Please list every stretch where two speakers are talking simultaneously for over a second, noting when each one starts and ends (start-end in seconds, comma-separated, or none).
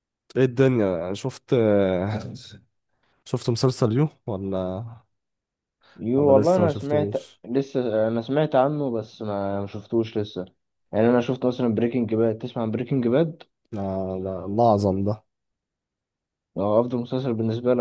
6.2-7.4